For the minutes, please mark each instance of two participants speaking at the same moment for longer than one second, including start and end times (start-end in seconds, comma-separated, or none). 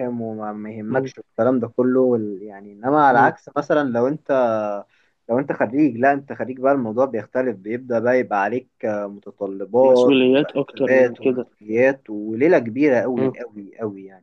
9.8-11.4